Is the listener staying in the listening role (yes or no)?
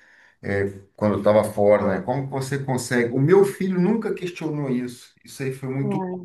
yes